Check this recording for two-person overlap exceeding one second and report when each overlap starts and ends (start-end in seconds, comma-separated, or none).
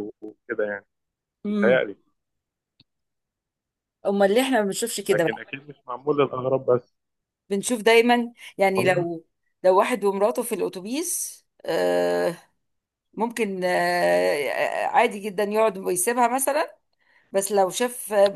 none